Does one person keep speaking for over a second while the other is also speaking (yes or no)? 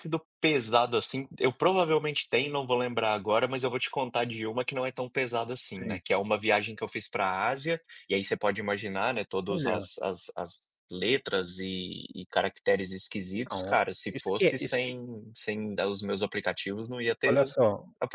yes